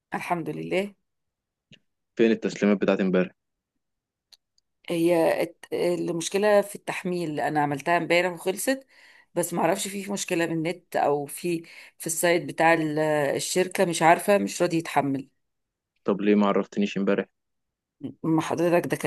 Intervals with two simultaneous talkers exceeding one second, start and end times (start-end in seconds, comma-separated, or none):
none